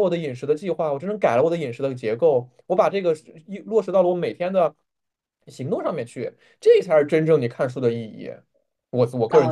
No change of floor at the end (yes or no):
no